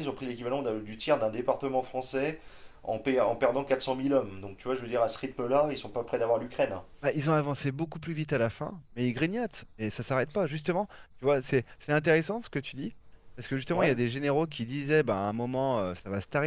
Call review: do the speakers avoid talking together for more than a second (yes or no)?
yes